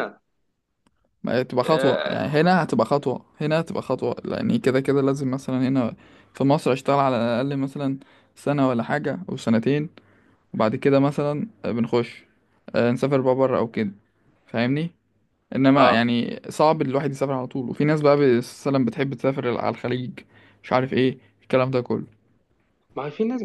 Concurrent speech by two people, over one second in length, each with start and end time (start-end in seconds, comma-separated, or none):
none